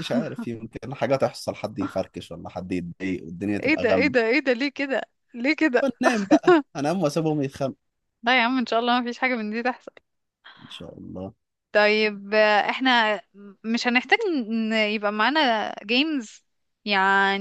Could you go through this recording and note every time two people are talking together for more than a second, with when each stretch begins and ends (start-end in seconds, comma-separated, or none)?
none